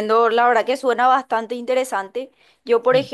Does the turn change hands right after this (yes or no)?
no